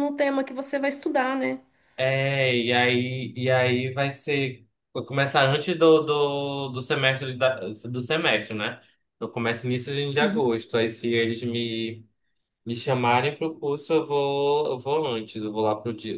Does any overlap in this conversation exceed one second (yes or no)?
no